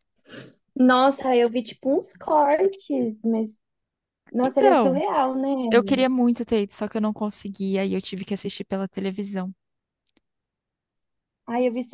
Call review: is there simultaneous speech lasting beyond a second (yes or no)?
no